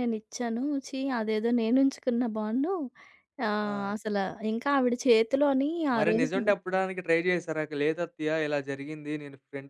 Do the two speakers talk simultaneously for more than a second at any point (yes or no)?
no